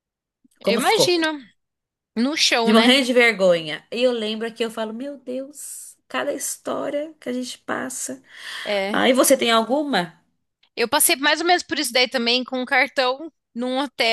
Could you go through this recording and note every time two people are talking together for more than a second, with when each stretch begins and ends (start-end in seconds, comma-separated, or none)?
none